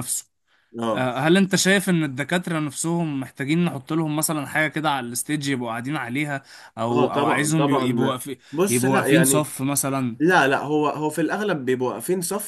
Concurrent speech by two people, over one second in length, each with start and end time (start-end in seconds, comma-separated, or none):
6.9-9.5